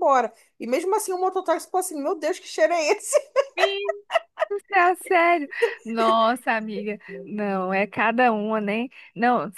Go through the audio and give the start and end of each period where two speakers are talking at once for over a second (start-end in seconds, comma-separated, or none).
none